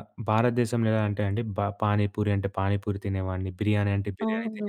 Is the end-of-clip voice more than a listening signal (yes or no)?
yes